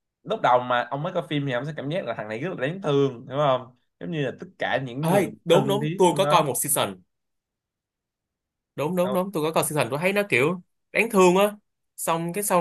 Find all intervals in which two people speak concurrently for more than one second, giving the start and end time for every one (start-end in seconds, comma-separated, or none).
5.0-6.5